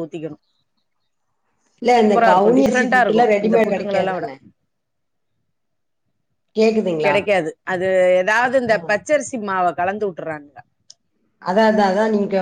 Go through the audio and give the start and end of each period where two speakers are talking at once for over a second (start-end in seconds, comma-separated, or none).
2.0-4.3